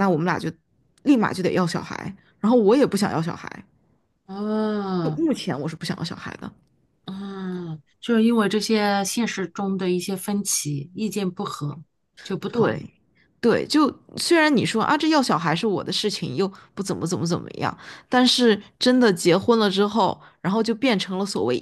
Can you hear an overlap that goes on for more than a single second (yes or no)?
no